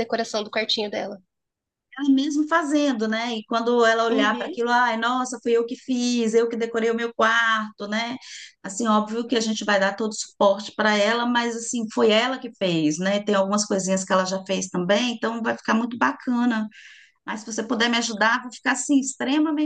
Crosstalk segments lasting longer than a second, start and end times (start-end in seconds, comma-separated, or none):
none